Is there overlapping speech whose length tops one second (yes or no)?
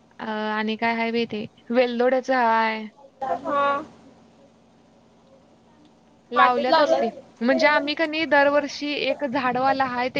yes